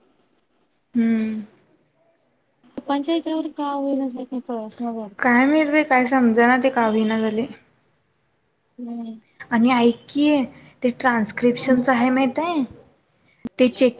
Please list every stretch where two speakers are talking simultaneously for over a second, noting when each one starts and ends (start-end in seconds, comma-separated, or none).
none